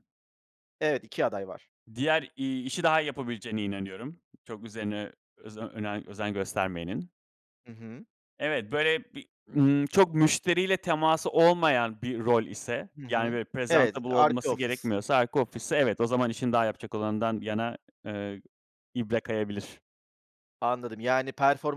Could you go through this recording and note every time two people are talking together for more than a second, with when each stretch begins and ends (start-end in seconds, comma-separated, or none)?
13.0-14.9